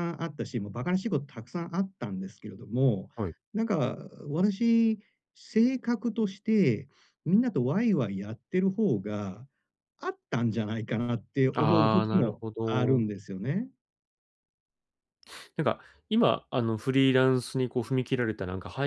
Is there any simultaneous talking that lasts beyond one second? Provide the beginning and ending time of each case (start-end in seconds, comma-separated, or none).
11.6-13.1